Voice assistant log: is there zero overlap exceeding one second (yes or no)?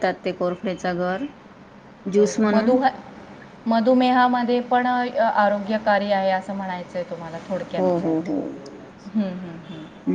yes